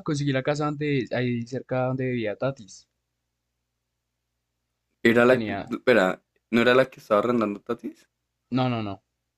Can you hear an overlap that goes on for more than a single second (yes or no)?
no